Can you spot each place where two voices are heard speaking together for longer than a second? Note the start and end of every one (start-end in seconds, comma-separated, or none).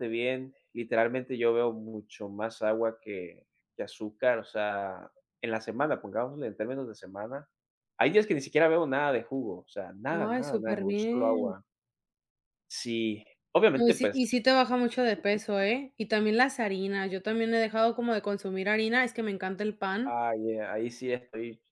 10.1-11.6